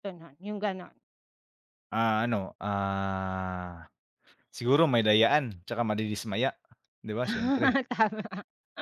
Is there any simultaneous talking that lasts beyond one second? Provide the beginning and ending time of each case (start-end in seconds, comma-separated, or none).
none